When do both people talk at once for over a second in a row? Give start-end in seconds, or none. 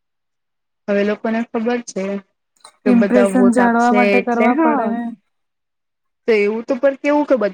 2.9-4.9